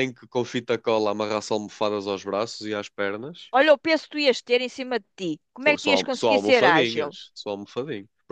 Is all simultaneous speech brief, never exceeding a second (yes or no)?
no